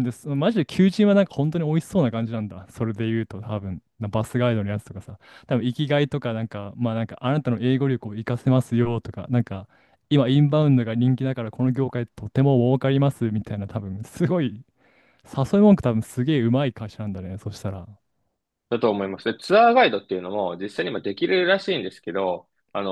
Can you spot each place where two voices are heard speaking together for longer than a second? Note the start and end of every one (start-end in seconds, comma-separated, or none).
none